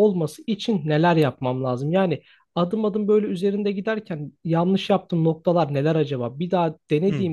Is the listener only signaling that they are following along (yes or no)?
yes